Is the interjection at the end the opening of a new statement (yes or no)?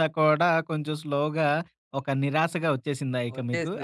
yes